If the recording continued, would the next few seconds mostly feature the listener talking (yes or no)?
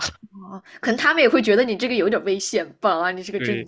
yes